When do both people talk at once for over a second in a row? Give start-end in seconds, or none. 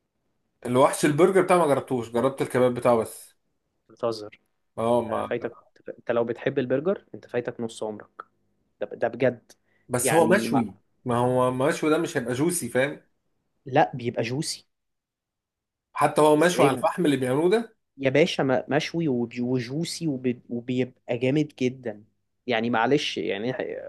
none